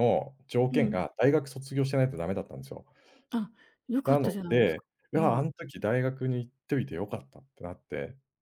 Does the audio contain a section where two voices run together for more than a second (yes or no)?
yes